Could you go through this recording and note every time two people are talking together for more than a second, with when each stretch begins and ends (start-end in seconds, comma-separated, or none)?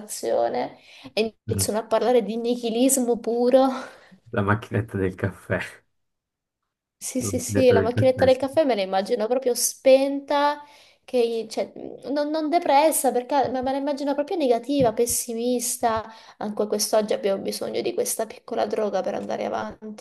7.2-8.4